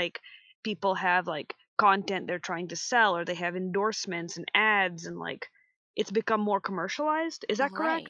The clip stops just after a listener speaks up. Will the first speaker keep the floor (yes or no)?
no